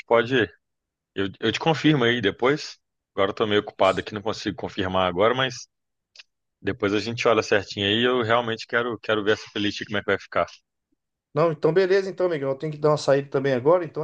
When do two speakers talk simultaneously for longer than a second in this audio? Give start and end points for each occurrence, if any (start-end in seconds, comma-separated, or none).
none